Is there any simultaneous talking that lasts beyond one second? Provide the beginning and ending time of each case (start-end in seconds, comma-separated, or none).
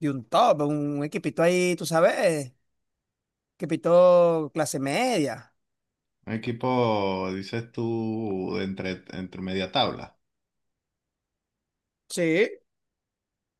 none